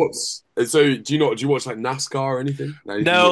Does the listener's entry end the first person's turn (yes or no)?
yes